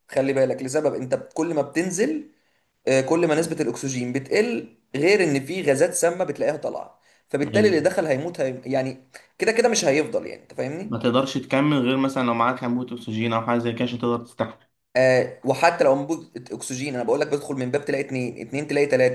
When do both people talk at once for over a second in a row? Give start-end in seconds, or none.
none